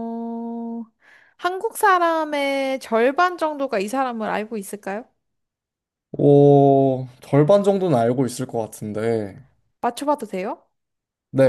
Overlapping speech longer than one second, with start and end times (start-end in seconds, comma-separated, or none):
none